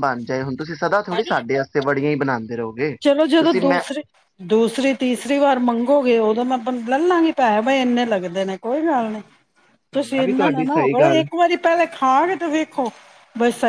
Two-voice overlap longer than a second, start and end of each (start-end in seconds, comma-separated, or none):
9.9-11.2